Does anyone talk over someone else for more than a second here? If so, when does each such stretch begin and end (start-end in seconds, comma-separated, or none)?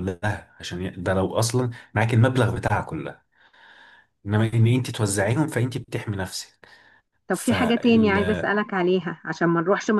7.3-8.5